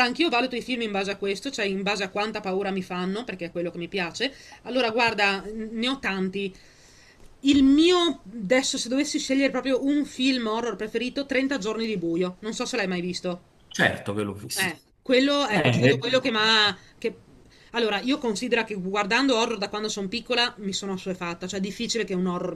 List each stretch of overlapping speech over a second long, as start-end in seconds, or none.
none